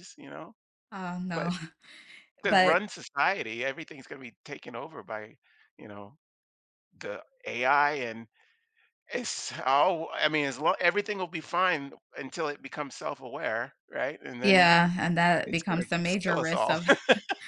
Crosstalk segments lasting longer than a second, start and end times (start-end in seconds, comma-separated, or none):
15.4-16.8